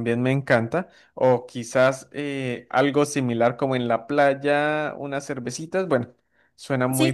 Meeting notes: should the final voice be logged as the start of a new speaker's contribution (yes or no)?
yes